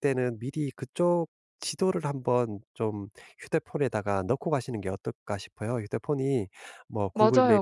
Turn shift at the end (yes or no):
yes